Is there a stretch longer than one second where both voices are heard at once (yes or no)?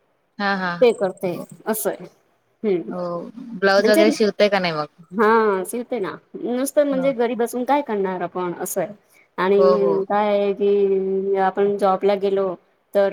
no